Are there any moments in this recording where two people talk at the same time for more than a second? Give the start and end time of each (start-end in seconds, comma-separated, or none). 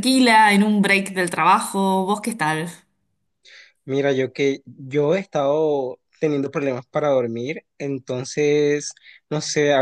none